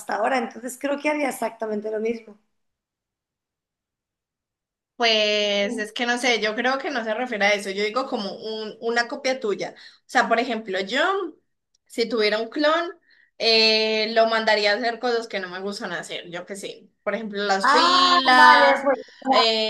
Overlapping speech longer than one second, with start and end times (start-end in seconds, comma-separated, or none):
17.6-18.8